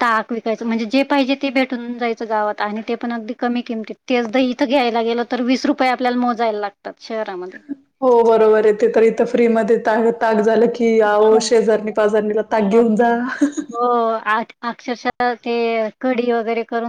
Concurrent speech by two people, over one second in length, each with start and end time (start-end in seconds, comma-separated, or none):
none